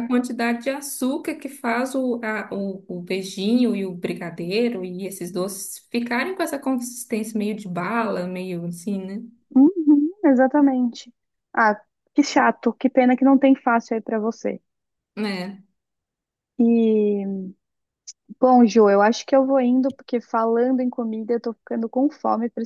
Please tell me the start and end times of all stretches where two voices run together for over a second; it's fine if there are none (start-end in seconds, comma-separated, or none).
none